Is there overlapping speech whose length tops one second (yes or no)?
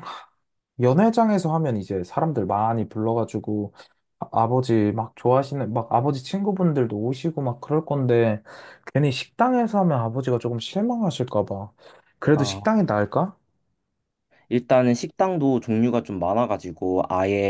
no